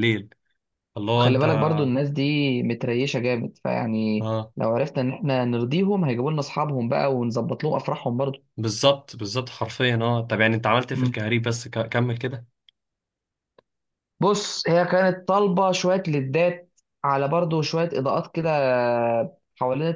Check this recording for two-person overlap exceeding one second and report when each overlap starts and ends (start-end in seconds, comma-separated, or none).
none